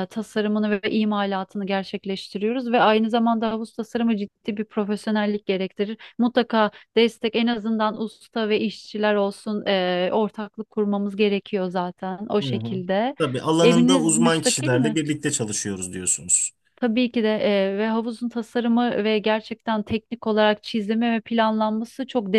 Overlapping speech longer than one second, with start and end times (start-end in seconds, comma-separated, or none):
13.6-15.0